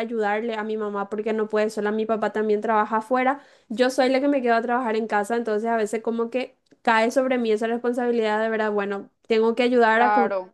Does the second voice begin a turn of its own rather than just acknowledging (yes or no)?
no